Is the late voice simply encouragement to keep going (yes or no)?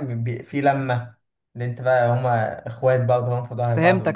no